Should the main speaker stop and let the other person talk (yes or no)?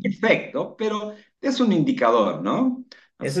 yes